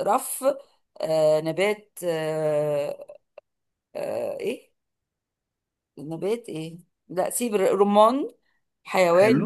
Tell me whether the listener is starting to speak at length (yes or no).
no